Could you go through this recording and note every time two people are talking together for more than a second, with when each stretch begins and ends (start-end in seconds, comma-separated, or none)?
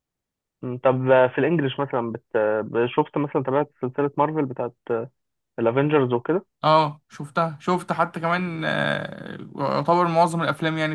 none